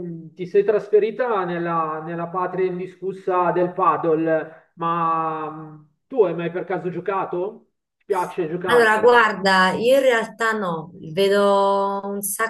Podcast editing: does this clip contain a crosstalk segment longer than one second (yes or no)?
no